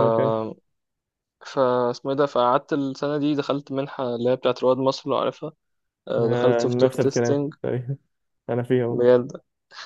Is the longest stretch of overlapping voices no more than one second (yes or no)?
no